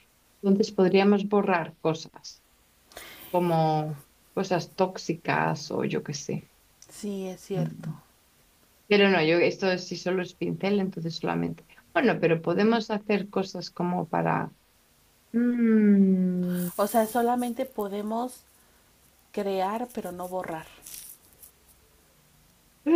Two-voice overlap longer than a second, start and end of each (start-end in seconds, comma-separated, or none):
none